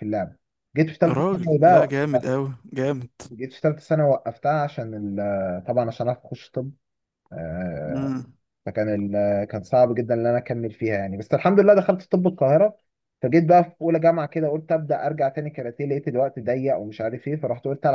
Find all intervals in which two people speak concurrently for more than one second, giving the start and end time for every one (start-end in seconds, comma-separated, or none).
1.1-2.3